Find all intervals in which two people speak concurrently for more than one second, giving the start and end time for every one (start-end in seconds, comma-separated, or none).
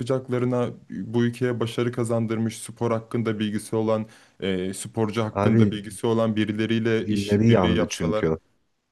7.0-8.2